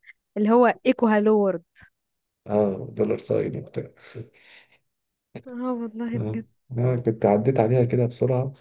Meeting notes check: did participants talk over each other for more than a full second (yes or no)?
no